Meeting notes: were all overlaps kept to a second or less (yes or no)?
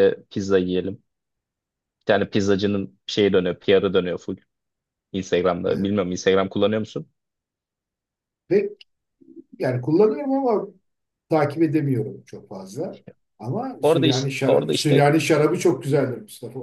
no